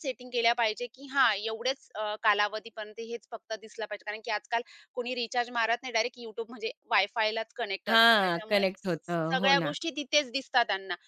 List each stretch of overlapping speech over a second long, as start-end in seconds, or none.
7.9-9.7